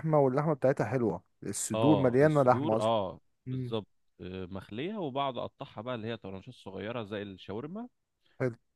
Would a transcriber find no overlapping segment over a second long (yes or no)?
no